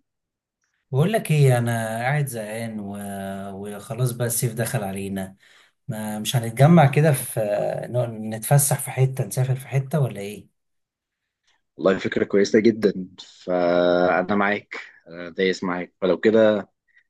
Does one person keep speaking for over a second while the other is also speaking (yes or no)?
no